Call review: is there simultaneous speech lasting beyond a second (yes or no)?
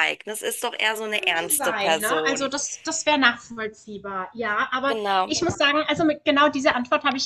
yes